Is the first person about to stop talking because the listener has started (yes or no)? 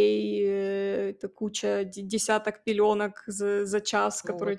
no